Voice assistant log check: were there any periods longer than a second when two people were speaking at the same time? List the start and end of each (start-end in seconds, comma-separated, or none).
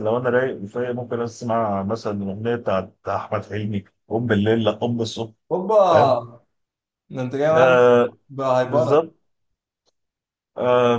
none